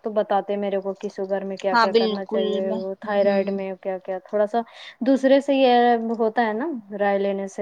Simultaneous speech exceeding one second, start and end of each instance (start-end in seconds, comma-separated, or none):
1.7-3.5